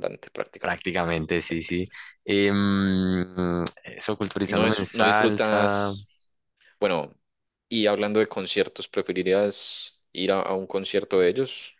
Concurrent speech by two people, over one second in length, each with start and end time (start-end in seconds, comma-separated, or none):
4.4-5.9